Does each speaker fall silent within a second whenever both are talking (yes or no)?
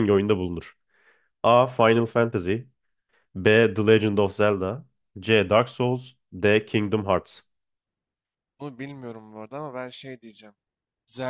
yes